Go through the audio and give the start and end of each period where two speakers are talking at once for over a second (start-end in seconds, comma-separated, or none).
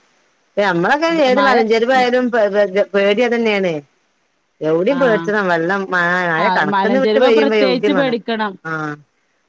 6.5-8.2